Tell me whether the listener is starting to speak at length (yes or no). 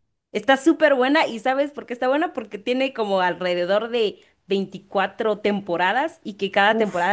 no